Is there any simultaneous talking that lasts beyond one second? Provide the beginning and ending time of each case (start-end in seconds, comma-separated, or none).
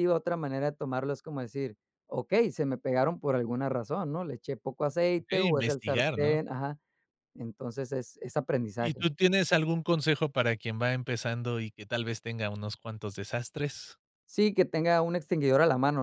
5.2-6.4